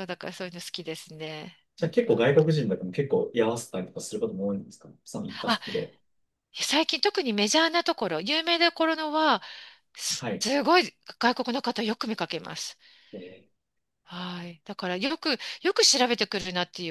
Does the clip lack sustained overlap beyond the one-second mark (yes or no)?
yes